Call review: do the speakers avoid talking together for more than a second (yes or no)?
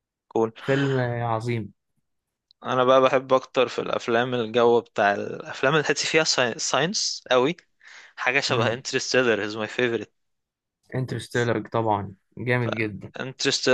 yes